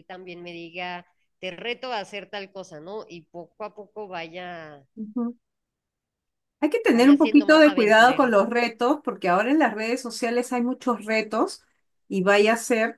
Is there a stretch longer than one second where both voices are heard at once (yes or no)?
yes